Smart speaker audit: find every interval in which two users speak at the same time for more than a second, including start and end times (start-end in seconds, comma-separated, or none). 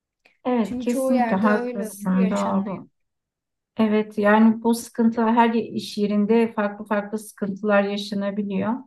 0.6-2.8